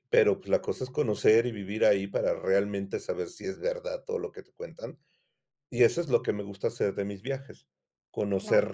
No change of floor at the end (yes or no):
yes